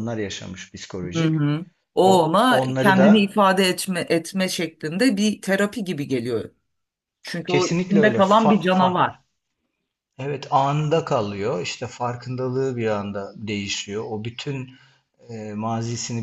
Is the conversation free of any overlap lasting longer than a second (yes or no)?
no